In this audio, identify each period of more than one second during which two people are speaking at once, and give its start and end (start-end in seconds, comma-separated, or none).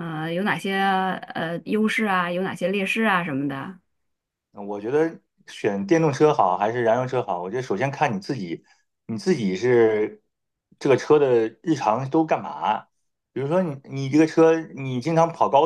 none